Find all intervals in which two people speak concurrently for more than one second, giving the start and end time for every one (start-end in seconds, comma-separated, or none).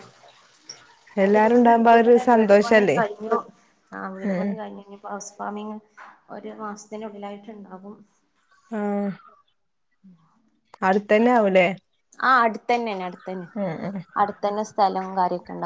1.2-3.0